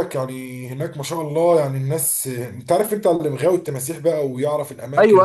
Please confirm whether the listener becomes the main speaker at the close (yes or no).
yes